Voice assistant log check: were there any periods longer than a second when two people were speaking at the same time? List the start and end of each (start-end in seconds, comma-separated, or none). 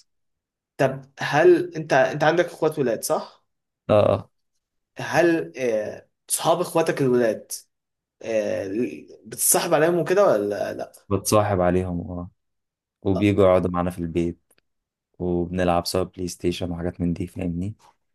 none